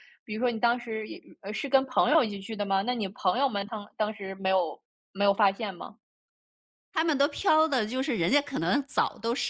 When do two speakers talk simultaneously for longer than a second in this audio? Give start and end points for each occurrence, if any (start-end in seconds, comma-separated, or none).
none